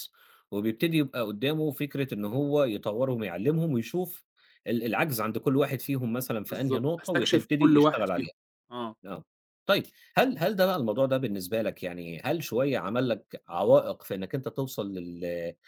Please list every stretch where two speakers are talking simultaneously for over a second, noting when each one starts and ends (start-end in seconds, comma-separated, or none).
6.5-8.3